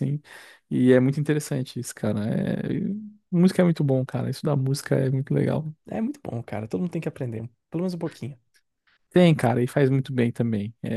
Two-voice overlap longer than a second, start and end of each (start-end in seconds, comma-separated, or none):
none